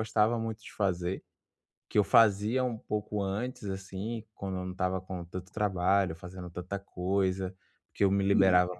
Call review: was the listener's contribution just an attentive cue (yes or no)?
yes